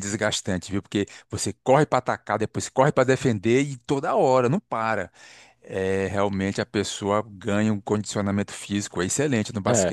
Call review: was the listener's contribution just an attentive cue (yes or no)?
no